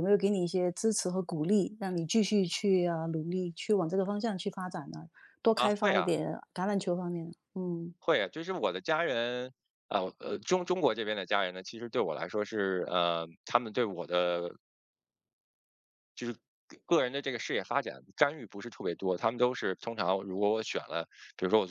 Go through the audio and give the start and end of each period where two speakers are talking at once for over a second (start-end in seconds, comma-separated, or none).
none